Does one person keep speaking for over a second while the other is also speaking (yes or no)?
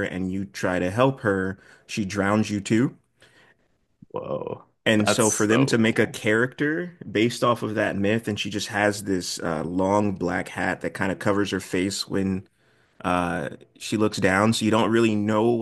yes